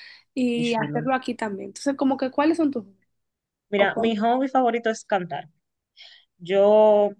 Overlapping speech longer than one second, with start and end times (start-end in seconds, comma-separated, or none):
none